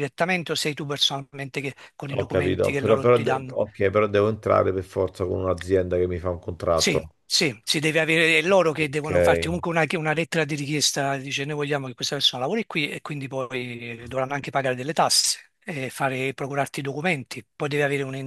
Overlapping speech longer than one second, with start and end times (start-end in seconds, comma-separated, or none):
2.2-3.6